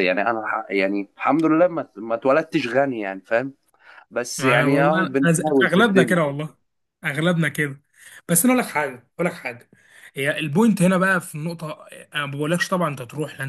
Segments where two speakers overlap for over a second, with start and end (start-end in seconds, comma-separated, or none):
4.4-6.3